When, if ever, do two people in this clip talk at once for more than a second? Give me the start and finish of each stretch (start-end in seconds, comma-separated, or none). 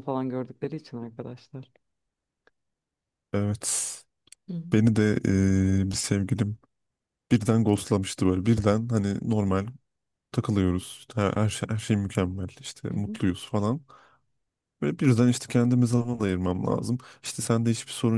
none